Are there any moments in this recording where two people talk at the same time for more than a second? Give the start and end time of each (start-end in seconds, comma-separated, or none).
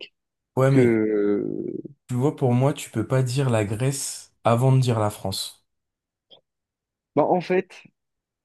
none